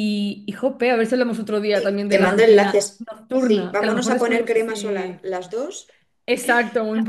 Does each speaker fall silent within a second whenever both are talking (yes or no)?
no